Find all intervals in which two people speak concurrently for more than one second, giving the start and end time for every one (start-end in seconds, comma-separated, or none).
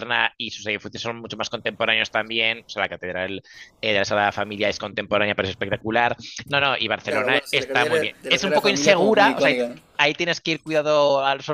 7.0-9.6